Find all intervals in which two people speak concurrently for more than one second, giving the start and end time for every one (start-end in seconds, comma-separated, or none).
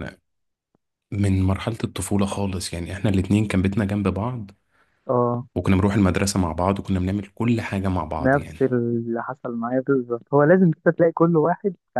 none